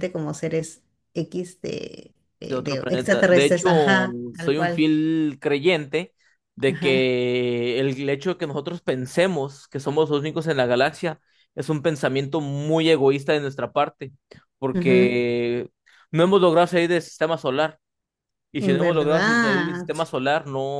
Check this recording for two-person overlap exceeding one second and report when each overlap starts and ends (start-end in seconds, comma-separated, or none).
2.4-4.9, 18.6-19.9